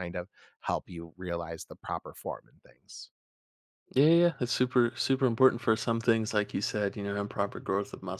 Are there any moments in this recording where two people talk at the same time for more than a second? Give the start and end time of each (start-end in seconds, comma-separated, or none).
none